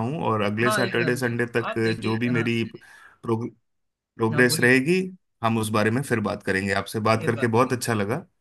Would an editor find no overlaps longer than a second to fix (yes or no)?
no